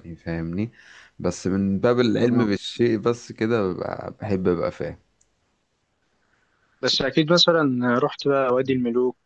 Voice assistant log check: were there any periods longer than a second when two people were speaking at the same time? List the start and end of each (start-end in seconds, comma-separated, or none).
none